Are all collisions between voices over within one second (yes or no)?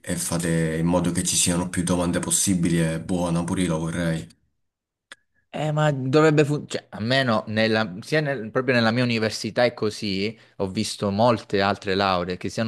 yes